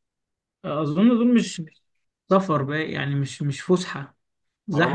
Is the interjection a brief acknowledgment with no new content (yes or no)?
no